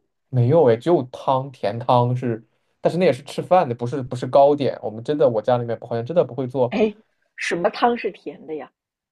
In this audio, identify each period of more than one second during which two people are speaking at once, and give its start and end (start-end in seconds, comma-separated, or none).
none